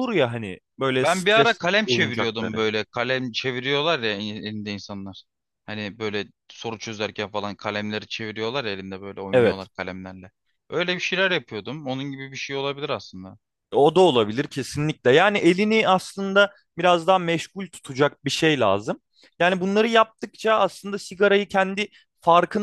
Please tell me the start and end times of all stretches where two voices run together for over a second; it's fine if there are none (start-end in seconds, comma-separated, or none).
1.0-2.6